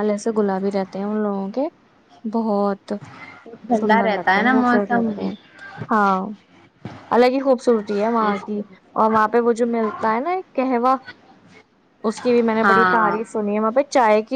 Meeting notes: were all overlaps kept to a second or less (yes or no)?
no